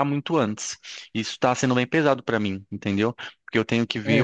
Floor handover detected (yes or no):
no